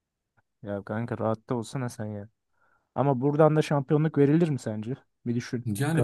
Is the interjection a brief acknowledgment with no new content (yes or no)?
no